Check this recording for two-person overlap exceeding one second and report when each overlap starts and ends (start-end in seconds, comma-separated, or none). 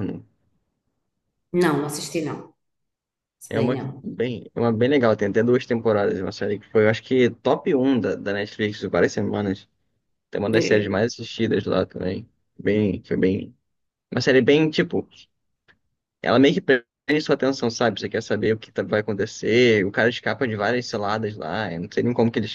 none